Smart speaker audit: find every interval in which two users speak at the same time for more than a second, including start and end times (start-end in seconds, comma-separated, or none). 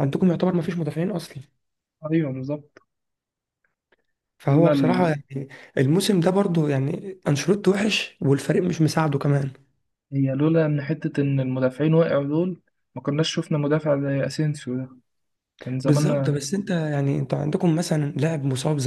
none